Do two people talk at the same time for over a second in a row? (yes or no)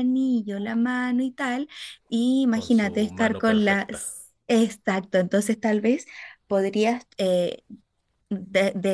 yes